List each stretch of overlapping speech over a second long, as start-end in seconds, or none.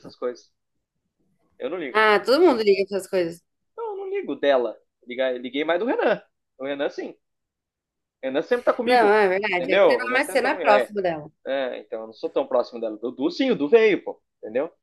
8.8-10.9